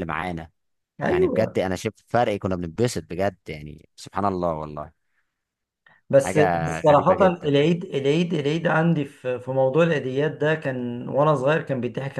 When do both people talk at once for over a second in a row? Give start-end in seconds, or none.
6.2-7.5